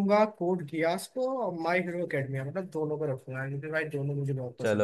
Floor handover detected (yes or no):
yes